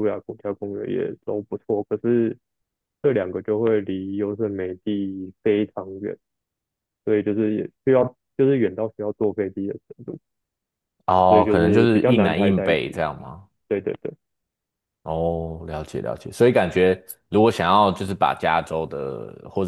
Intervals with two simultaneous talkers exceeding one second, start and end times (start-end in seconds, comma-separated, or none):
11.3-12.8